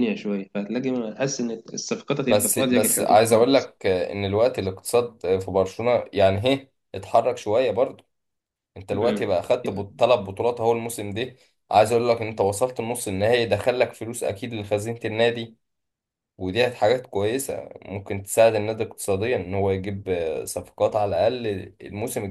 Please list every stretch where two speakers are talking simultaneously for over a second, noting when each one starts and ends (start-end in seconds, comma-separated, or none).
2.3-3.7